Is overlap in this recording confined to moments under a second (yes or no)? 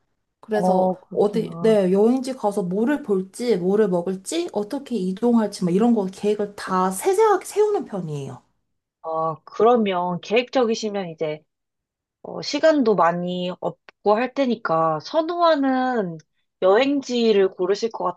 no